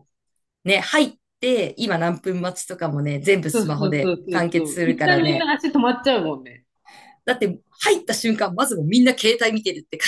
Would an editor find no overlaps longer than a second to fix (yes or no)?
no